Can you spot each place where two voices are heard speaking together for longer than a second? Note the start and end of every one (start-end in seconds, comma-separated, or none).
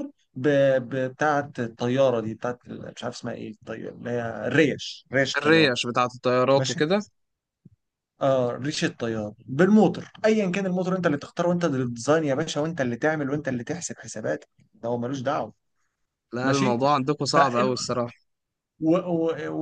none